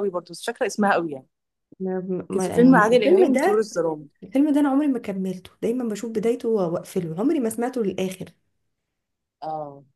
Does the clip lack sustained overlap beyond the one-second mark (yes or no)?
no